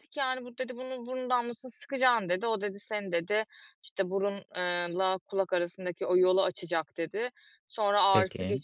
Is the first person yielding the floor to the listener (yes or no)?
no